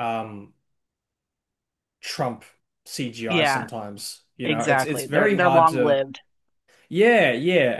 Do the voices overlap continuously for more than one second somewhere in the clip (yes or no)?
yes